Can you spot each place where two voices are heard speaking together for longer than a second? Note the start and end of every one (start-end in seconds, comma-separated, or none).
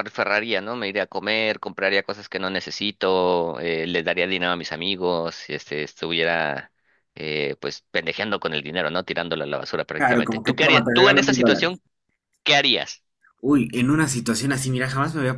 10.0-11.8